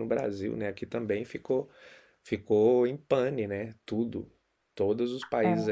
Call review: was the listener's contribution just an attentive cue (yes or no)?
yes